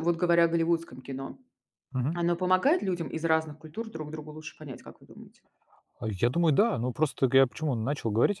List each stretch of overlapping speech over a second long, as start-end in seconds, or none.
none